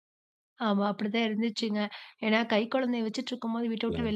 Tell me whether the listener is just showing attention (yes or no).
yes